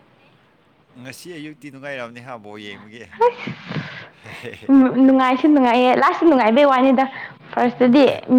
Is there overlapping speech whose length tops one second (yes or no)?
no